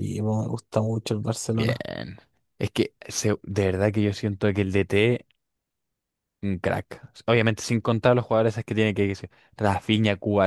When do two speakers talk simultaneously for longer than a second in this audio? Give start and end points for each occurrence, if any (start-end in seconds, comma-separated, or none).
none